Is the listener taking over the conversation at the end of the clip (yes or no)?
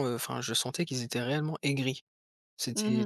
yes